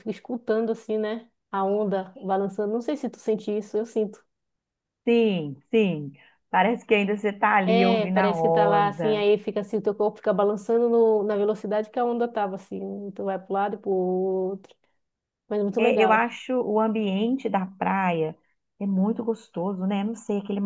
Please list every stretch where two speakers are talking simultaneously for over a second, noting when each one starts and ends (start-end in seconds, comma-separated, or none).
7.7-9.2